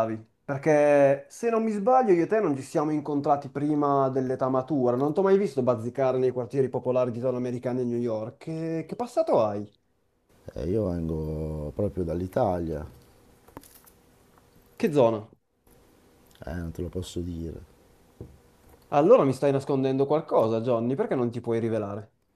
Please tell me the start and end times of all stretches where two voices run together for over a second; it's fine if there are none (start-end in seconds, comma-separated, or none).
none